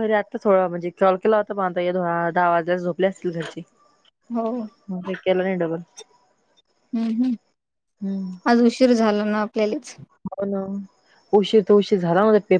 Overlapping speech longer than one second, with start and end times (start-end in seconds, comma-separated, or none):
none